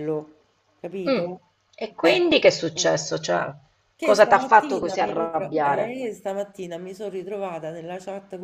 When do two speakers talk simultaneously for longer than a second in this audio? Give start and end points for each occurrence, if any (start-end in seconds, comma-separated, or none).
4.0-6.0